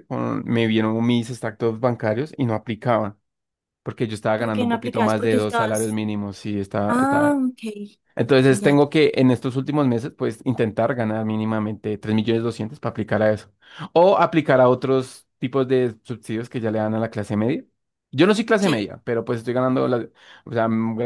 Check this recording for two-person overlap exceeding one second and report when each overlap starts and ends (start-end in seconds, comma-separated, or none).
4.3-6.0